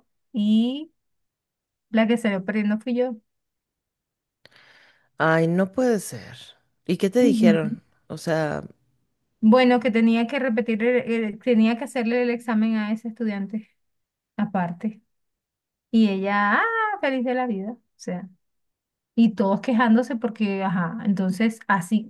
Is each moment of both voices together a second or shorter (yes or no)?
yes